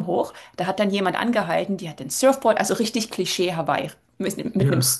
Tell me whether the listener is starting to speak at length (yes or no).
no